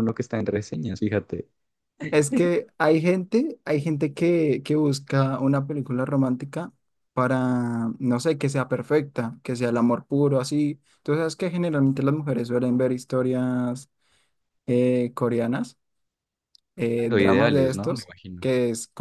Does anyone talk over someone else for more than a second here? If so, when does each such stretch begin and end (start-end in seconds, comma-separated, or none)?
16.9-18.4